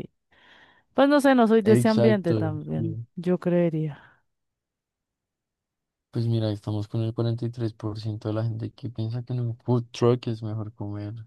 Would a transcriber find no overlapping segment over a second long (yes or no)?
no